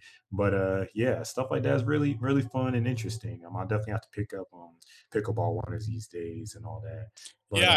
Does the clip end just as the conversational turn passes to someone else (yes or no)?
yes